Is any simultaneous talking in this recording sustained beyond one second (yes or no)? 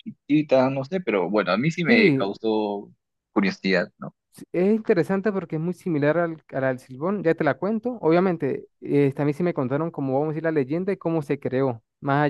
no